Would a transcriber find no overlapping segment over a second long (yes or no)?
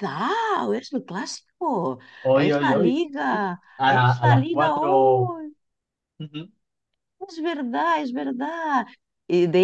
no